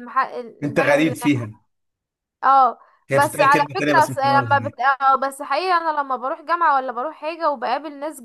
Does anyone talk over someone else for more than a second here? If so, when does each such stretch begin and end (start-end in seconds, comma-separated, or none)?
3.1-4.8